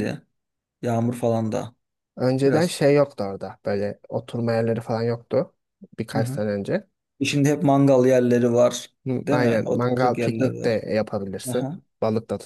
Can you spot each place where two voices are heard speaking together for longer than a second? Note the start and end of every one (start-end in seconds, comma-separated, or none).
9.3-10.8